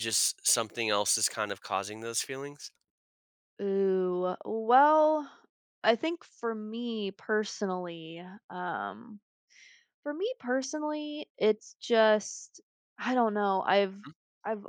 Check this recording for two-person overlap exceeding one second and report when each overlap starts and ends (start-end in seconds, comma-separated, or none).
none